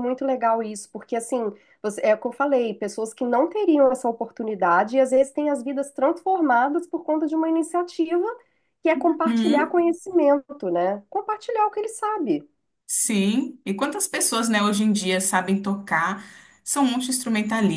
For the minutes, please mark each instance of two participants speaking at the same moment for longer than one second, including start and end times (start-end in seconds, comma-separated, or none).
none